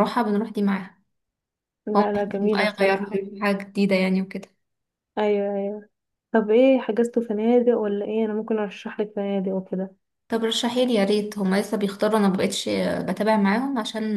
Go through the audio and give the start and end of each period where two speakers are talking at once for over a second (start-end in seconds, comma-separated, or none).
1.9-3.2